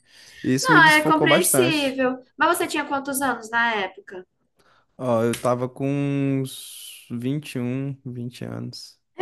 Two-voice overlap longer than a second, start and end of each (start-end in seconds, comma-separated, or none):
0.6-1.9